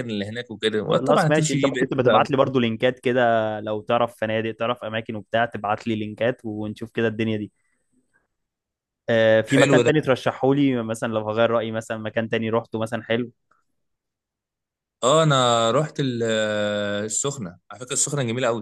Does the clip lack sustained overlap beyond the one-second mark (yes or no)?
no